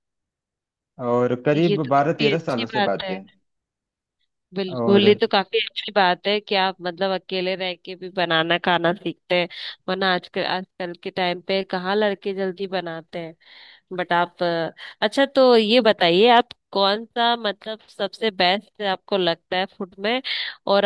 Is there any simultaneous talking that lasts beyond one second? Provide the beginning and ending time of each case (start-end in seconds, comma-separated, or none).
1.5-3.1